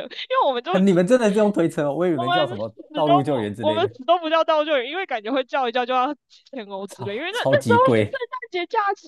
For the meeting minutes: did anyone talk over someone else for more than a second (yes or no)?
yes